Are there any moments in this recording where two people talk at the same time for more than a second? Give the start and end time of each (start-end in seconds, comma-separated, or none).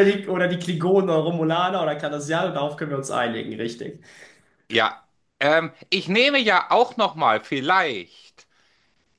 none